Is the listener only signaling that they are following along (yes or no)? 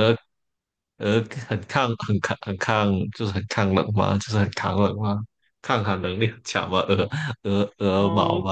no